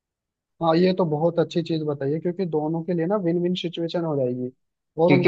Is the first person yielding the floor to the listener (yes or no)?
yes